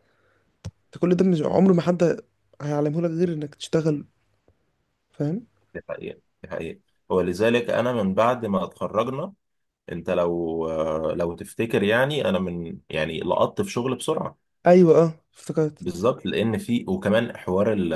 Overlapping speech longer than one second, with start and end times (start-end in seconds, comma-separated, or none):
none